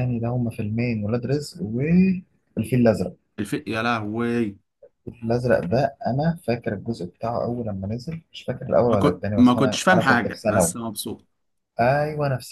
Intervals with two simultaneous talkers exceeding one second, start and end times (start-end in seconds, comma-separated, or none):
8.9-10.7